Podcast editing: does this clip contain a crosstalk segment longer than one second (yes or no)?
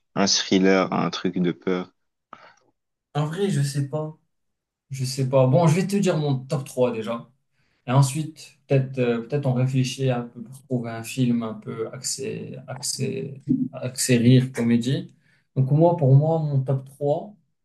no